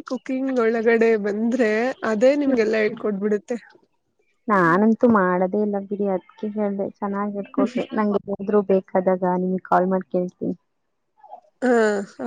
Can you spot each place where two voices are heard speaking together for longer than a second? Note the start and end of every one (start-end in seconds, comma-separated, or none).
none